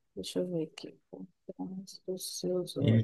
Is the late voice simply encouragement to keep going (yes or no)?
no